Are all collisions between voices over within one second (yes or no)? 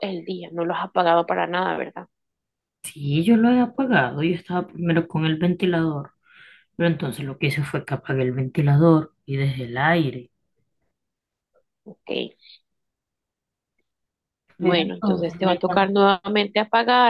no